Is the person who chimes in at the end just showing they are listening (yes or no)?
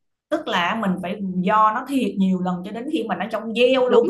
no